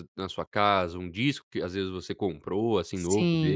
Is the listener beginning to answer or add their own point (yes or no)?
yes